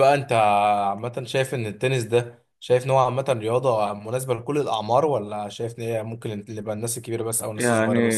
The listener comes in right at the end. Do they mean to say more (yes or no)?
yes